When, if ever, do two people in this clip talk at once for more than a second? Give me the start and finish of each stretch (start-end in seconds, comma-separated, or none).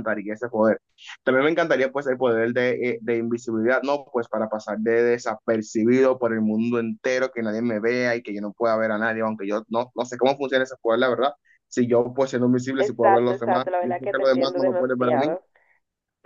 12.8-15.4